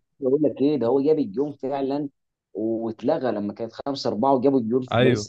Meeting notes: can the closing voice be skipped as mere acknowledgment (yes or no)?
no